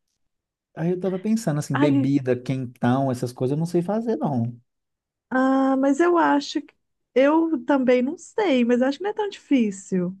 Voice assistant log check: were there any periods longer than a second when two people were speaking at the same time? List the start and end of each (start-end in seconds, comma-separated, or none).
none